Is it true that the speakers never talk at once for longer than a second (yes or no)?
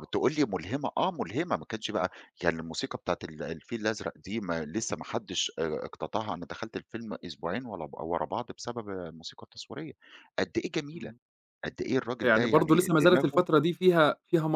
no